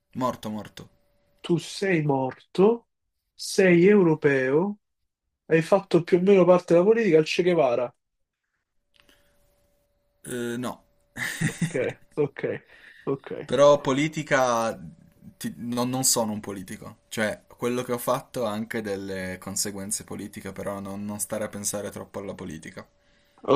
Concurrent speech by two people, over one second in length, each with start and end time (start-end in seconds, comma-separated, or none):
none